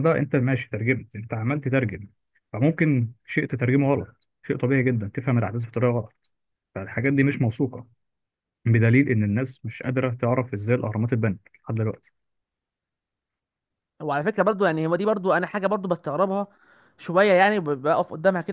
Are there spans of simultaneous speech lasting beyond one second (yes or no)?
no